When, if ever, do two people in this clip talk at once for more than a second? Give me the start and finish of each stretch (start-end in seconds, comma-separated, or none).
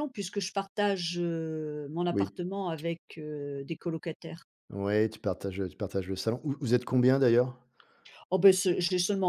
none